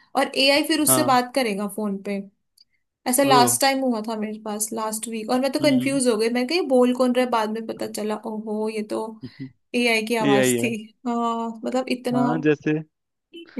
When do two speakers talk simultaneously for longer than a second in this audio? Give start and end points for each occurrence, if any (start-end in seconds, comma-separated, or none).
none